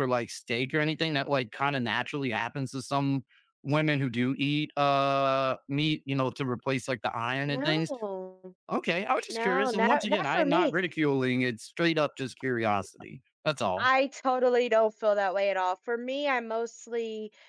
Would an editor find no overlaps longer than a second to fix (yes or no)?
no